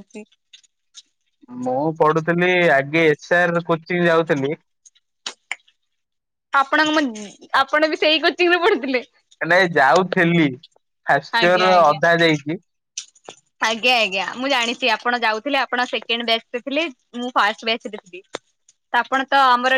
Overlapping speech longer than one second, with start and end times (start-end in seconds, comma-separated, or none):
none